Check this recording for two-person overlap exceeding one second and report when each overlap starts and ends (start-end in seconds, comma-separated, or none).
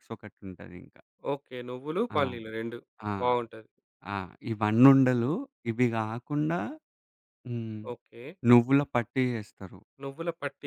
none